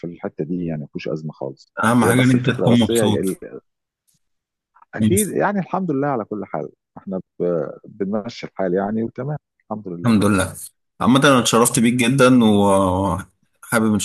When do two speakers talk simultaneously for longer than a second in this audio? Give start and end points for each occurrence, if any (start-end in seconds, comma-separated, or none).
1.8-3.2